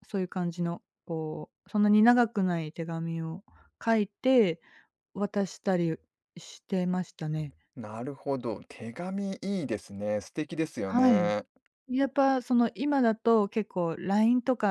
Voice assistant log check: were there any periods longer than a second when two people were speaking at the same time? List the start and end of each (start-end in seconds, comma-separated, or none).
none